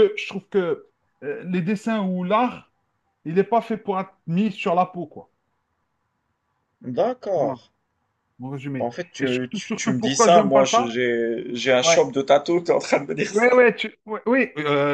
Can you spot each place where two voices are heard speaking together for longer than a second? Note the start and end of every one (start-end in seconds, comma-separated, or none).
8.8-10.8